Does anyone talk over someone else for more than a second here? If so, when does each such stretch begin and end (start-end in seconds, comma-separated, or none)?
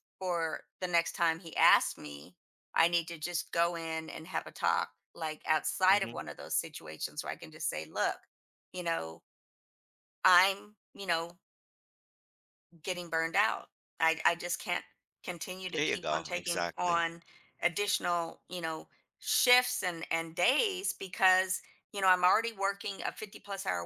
15.7-17.0